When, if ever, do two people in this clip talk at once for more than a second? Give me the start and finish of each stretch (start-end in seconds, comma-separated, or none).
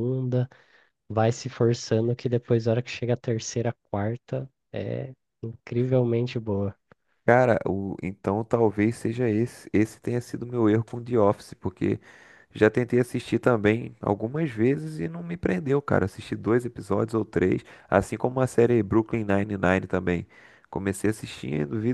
none